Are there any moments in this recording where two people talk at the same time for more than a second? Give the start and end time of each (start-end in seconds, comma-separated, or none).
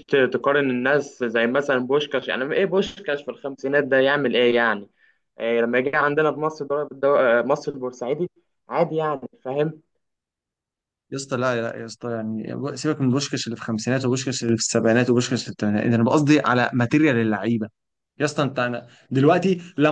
none